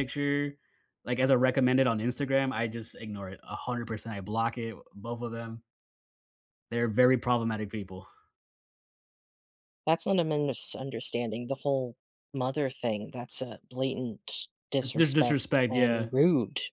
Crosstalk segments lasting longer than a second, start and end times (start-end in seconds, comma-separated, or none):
14.8-16.1